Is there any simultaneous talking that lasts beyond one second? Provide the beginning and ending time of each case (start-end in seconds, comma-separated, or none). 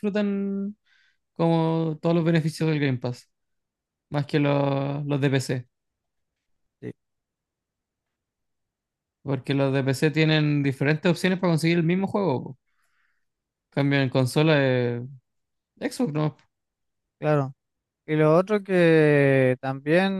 none